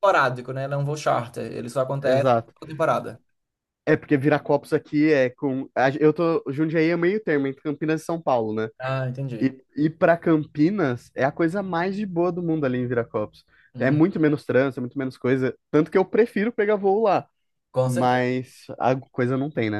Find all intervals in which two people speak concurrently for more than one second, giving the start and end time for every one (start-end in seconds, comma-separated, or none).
none